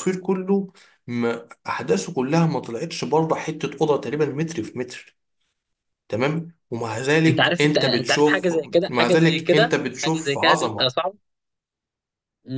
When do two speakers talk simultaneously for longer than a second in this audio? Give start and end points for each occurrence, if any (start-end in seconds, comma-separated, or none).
6.9-10.9